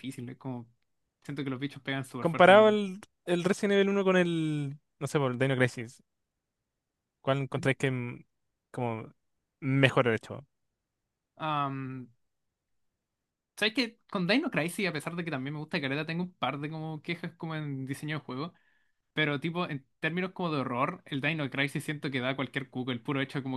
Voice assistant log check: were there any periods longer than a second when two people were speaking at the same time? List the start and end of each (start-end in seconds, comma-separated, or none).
none